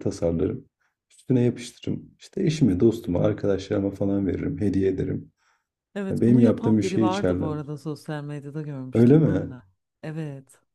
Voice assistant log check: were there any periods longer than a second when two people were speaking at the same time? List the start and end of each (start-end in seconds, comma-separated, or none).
6.1-7.5